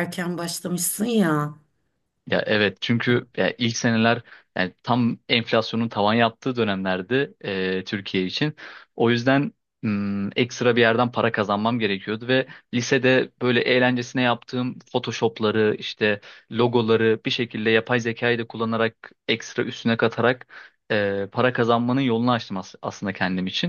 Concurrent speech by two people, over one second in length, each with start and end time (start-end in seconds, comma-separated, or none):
none